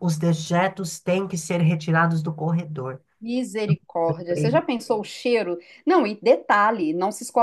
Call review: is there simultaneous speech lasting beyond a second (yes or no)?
no